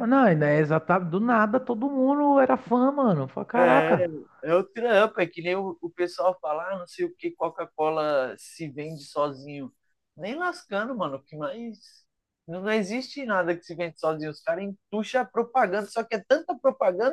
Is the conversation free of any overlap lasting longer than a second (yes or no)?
yes